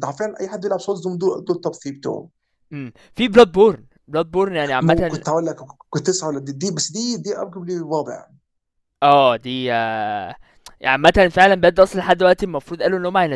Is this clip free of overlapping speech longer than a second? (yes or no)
yes